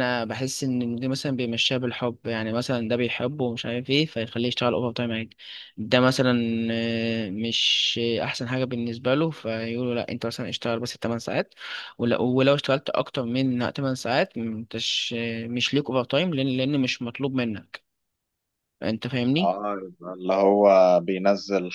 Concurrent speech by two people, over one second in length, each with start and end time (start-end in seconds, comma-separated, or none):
none